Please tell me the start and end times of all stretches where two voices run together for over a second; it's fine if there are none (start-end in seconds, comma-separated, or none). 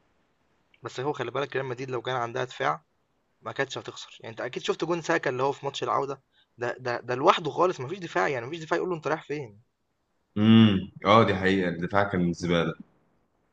none